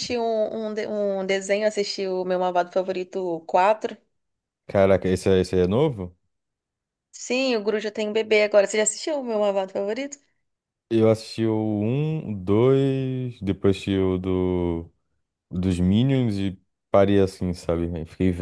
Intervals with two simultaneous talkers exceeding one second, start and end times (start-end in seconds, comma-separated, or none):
none